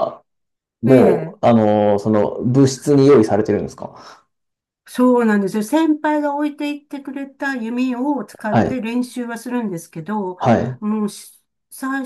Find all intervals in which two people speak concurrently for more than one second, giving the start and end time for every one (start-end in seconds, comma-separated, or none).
none